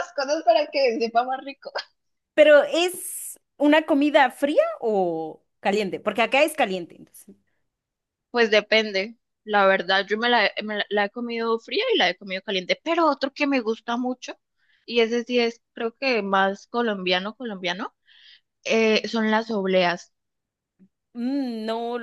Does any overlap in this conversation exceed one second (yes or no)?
no